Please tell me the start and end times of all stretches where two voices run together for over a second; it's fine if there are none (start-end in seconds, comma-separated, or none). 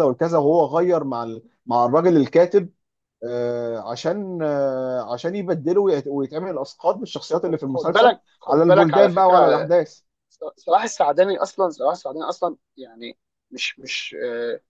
7.4-9.4